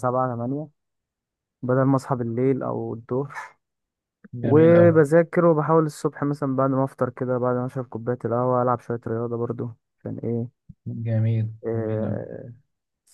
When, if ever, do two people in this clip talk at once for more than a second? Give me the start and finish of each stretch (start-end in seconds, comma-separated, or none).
none